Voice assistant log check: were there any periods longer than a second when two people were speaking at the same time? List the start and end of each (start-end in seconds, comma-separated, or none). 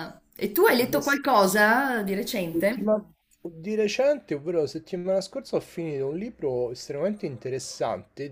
none